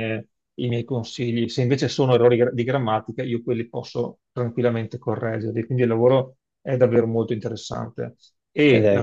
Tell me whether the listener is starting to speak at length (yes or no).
no